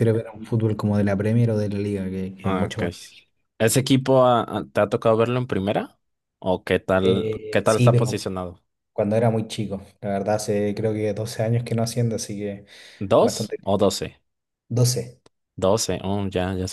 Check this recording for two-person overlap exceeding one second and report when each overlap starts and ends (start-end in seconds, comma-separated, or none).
7.0-8.3